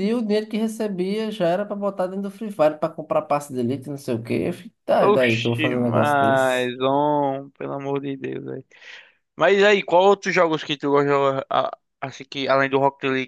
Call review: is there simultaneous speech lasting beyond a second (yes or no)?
yes